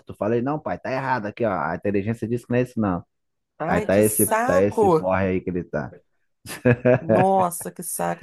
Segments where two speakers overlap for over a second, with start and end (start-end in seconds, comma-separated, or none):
3.7-5.1